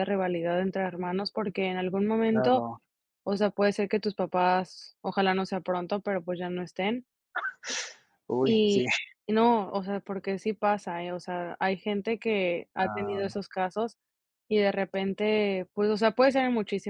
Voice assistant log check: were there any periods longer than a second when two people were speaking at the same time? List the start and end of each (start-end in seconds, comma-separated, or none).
none